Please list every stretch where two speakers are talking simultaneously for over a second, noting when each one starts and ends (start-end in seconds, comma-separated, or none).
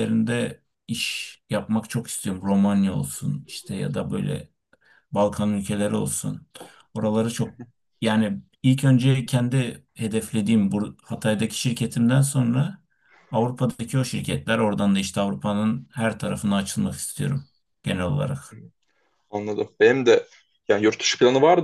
none